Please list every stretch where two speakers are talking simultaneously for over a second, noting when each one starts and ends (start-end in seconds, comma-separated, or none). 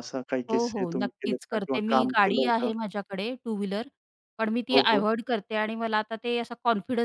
0.5-2.7